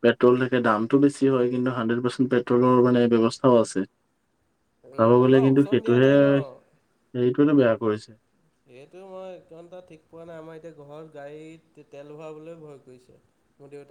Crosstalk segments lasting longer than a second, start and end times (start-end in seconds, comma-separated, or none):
4.9-6.6